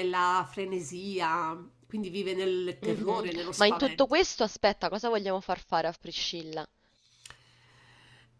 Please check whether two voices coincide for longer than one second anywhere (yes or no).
yes